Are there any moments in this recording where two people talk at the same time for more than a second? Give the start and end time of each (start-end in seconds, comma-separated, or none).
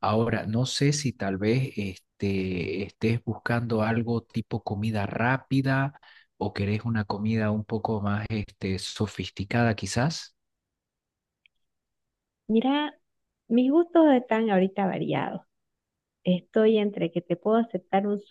none